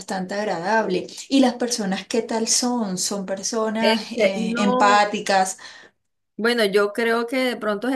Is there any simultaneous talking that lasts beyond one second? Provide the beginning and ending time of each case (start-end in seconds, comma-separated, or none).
3.8-5.0